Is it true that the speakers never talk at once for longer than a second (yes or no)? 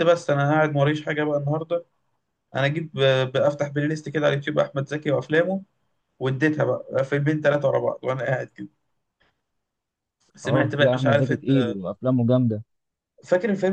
no